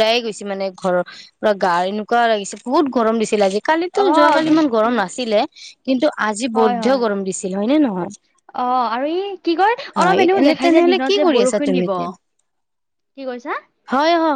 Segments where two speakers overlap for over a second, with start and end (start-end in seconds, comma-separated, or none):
10.0-11.9